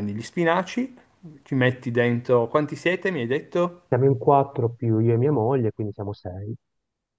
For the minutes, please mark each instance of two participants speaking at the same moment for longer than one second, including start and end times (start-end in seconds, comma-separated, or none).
none